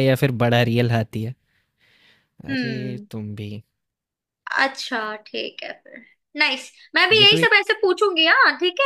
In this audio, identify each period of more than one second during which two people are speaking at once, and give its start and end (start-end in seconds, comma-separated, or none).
none